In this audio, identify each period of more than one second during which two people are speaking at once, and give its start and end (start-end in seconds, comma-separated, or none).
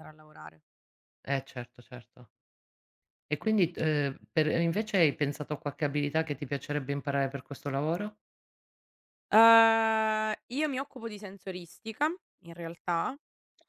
none